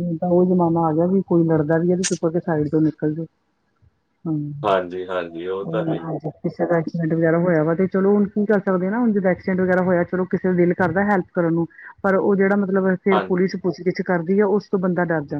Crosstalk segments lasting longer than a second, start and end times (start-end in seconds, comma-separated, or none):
none